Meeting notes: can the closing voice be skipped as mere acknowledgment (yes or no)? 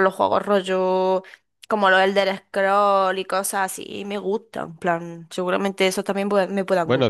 no